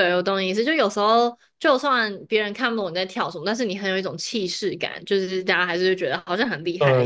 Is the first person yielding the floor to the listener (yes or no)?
yes